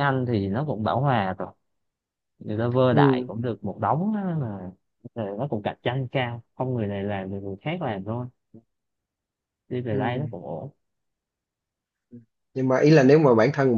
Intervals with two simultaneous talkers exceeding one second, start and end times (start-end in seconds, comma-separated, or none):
none